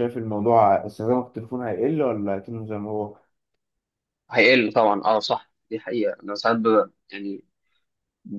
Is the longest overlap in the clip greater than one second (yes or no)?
no